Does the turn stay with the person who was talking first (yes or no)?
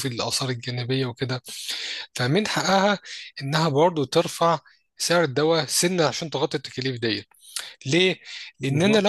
yes